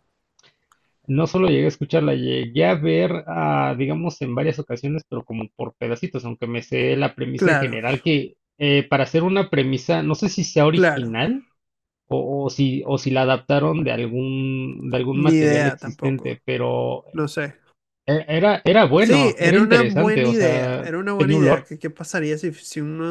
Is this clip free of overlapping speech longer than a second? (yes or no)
no